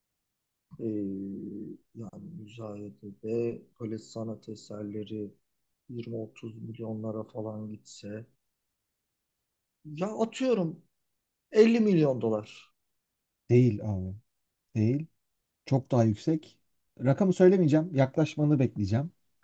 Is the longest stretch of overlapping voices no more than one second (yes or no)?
yes